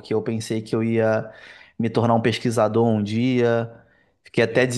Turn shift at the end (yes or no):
no